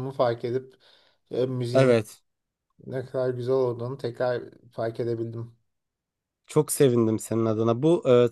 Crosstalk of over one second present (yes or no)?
no